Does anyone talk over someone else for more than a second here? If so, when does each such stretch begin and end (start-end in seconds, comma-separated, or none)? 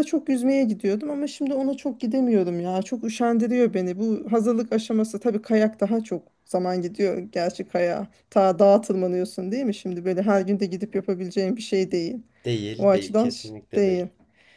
12.8-14.1